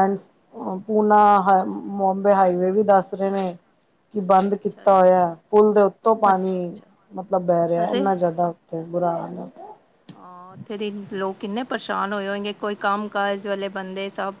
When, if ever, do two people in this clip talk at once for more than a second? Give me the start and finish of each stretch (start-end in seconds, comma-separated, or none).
none